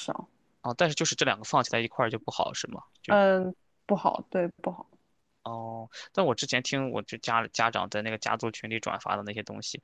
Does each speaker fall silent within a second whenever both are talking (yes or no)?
yes